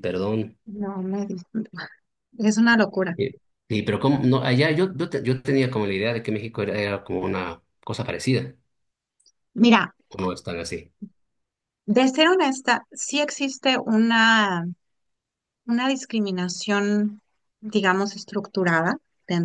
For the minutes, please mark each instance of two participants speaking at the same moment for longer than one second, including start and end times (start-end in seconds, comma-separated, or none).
none